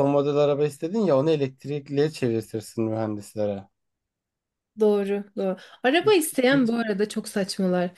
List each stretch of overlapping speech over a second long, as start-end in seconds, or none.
none